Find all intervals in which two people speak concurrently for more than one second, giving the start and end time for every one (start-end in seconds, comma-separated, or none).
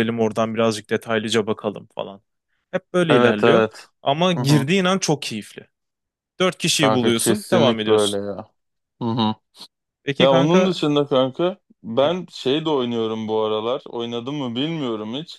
6.8-8.2